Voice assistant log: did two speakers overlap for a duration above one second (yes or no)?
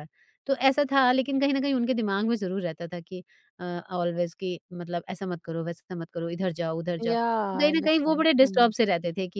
yes